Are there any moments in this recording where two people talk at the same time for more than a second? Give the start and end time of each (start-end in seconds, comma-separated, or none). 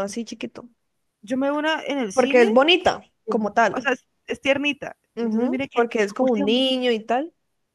5.2-6.7